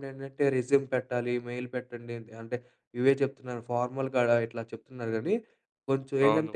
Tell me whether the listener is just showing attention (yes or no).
yes